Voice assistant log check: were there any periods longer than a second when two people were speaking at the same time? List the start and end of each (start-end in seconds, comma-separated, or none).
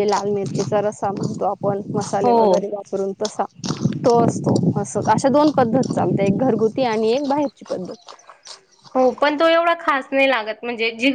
none